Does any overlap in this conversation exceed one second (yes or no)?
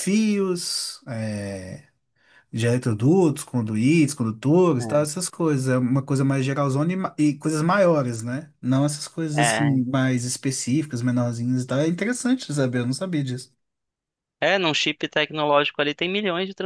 no